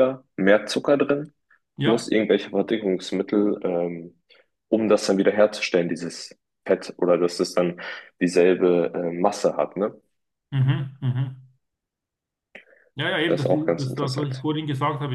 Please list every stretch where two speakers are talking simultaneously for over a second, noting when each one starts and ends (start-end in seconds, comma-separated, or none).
13.3-14.5